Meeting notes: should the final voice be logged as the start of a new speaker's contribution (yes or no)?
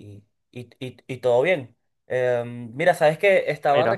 no